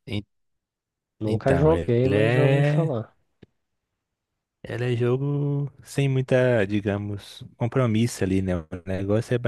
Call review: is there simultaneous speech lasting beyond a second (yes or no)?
yes